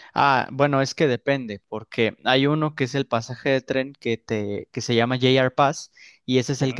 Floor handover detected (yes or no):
no